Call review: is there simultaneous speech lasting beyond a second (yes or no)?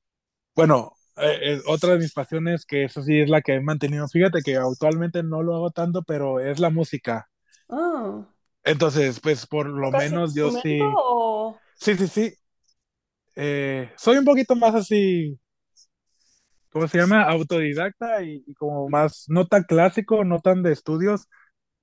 yes